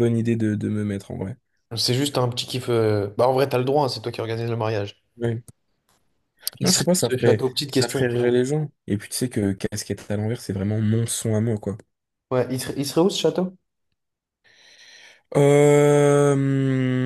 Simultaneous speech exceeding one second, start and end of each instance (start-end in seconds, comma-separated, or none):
6.6-8.3